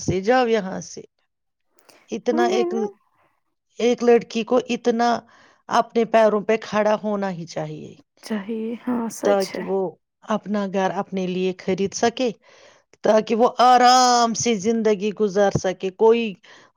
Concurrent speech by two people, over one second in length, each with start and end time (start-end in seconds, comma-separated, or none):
none